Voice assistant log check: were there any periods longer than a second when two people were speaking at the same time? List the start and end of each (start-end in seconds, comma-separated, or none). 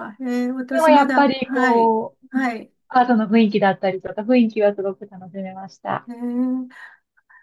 0.7-2.4